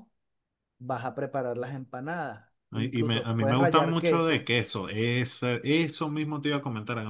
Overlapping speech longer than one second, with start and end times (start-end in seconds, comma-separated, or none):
2.7-4.5